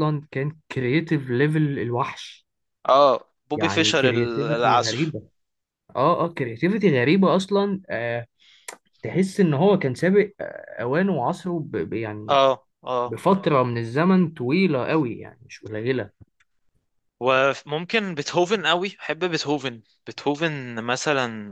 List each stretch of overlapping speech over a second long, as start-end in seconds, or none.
3.5-5.1